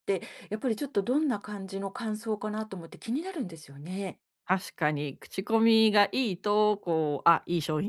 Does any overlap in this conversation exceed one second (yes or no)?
no